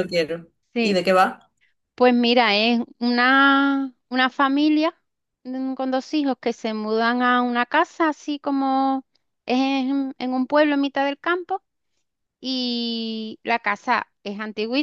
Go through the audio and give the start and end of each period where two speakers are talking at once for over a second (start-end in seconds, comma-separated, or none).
none